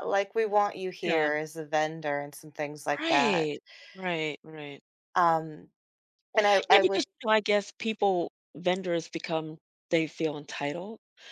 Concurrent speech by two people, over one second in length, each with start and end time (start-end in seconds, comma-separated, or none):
none